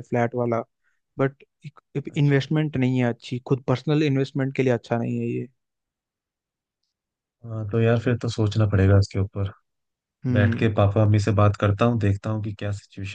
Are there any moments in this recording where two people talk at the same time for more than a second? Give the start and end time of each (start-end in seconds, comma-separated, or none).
none